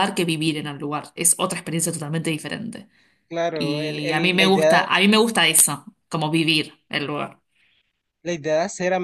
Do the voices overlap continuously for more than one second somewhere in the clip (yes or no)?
yes